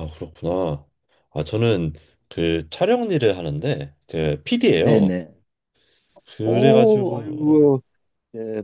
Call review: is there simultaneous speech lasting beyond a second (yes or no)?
yes